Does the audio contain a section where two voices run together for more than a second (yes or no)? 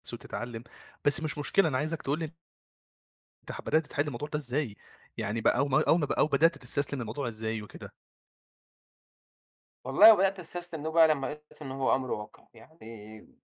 no